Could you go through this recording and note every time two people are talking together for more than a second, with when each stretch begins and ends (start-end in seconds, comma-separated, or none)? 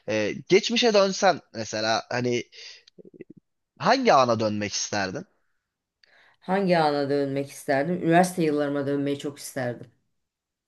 none